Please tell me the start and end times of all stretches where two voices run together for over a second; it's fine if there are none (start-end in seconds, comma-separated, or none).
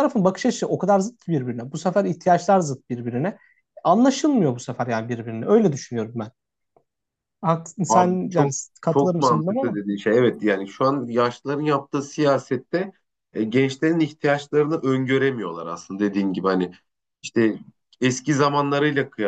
7.9-9.8